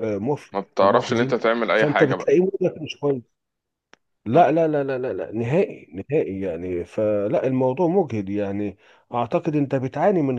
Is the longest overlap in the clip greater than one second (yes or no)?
yes